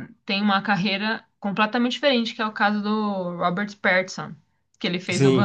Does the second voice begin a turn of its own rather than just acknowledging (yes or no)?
yes